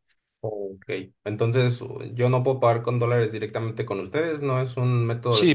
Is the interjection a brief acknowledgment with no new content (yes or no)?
no